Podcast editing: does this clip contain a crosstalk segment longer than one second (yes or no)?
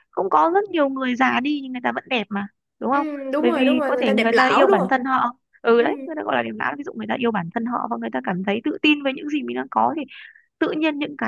yes